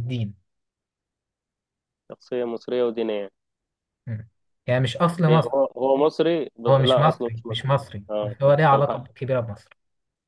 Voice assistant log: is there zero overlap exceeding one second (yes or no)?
no